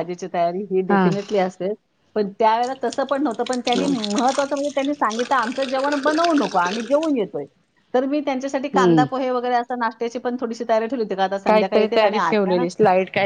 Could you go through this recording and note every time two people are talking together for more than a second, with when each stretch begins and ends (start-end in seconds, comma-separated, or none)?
11.5-12.7